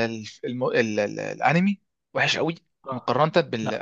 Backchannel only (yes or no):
yes